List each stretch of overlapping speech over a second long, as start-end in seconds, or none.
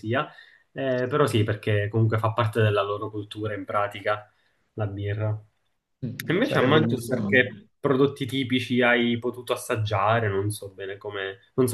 6.2-7.6